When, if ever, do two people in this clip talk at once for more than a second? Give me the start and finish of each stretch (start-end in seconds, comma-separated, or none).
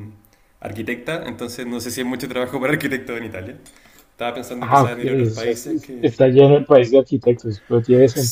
4.6-6.1